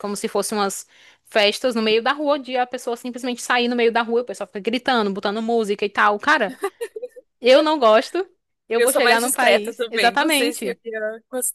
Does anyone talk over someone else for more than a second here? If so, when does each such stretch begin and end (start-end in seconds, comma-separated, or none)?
8.8-10.8